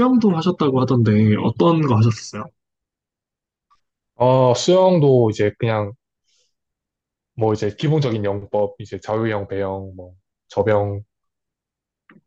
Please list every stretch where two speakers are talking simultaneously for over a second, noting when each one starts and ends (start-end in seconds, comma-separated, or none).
none